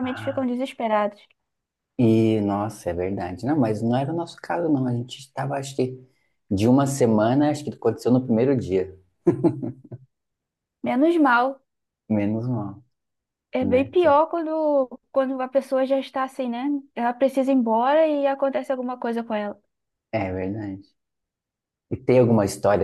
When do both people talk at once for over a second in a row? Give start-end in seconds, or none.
none